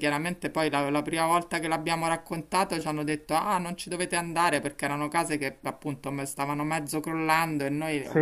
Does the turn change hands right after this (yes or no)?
no